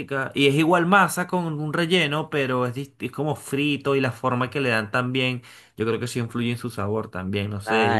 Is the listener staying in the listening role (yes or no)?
no